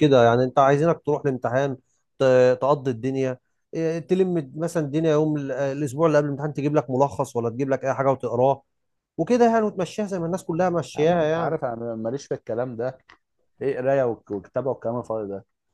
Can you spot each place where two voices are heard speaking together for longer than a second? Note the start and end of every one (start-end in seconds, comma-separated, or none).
none